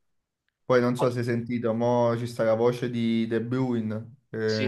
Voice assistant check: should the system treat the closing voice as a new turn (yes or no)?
no